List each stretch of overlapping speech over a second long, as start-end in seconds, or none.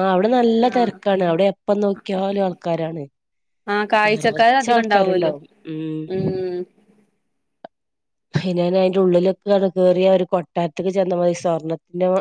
4.1-5.3